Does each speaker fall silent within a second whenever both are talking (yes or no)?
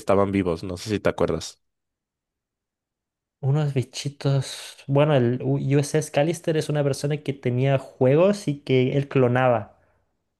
yes